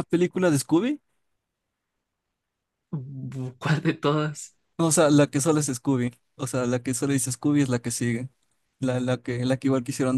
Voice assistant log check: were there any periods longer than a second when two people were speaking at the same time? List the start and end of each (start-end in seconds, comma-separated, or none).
none